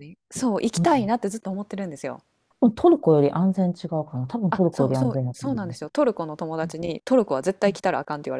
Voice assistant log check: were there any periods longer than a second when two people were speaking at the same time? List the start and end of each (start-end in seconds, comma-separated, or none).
4.5-5.8